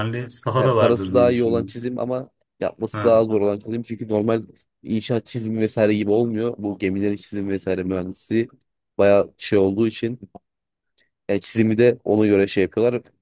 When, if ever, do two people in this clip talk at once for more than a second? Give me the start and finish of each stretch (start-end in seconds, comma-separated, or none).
0.6-1.8